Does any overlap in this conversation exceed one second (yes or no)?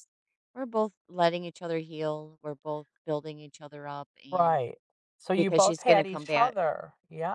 yes